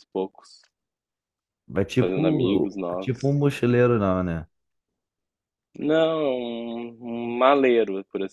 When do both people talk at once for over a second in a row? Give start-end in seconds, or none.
2.0-3.4